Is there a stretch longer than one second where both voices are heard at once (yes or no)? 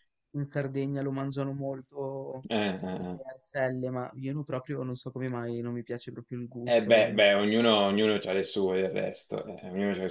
no